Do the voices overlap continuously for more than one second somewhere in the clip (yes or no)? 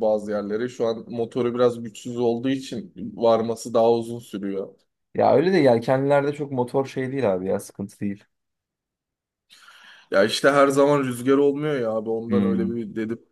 no